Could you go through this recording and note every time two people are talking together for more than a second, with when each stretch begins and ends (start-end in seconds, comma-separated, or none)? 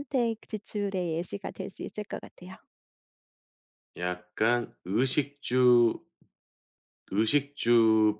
none